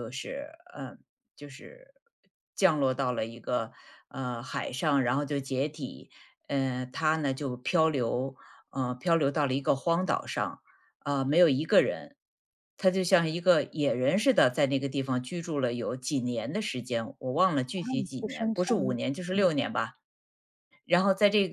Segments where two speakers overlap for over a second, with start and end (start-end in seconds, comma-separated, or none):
17.8-19.5